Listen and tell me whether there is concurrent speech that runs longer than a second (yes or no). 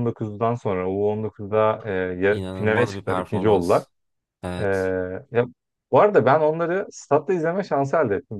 yes